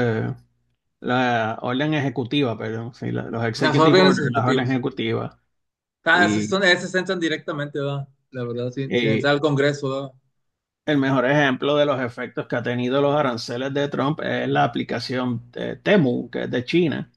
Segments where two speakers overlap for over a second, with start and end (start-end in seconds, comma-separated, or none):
3.5-4.8